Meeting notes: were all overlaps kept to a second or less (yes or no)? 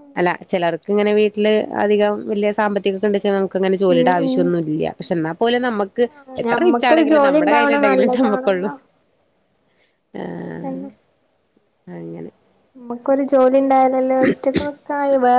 no